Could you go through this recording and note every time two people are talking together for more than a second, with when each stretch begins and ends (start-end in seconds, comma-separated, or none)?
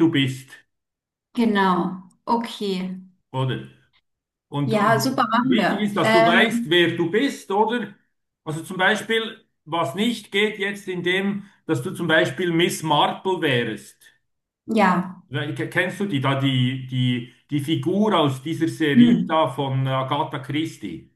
4.6-6.8